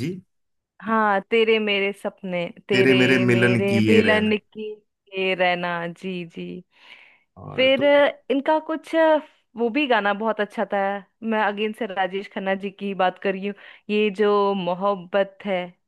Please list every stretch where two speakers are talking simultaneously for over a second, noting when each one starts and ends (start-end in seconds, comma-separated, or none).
2.7-4.3